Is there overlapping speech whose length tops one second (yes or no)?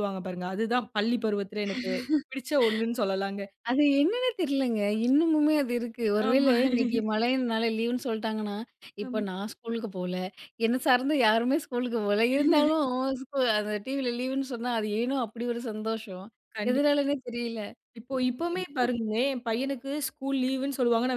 no